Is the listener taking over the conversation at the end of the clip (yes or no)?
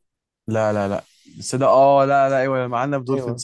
yes